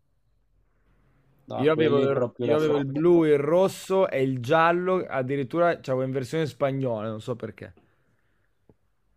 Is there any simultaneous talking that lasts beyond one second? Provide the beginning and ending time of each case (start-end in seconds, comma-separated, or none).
1.5-3.0